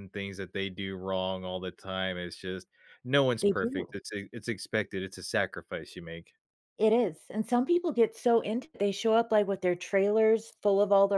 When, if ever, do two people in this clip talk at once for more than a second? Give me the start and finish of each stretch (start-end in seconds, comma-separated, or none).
none